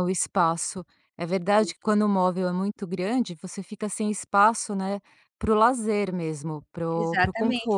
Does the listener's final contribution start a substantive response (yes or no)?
yes